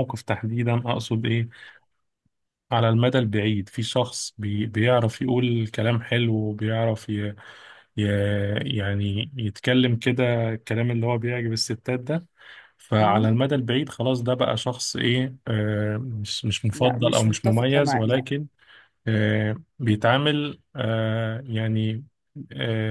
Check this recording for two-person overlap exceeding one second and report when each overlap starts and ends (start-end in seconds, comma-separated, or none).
16.7-18.3